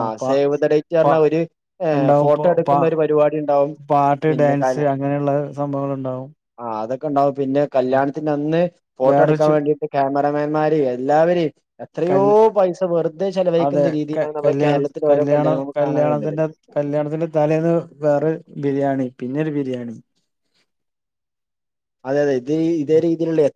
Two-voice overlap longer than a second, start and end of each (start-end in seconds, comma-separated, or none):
13.7-16.4